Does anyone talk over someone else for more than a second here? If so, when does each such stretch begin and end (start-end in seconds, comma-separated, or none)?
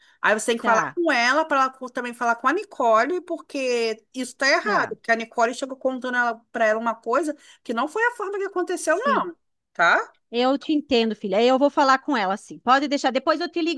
none